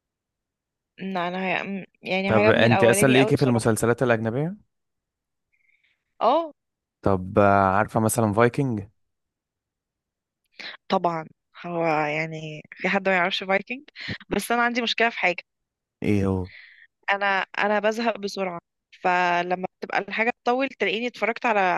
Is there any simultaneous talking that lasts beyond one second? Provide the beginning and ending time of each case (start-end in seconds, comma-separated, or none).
2.3-3.7